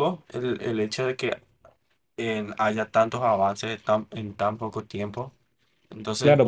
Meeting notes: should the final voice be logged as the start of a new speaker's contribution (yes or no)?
yes